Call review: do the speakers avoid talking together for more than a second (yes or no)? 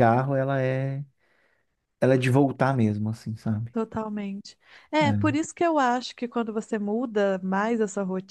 yes